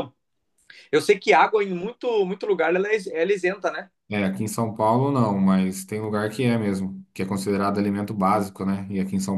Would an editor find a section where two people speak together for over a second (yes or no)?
no